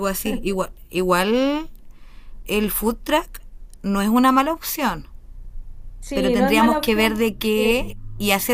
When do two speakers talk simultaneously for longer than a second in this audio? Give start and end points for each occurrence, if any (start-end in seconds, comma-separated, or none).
6.1-7.6